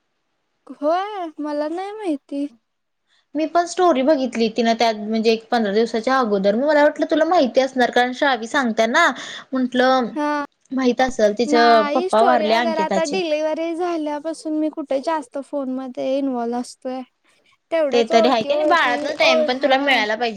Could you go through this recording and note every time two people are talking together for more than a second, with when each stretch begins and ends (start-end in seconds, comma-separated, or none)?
17.9-19.8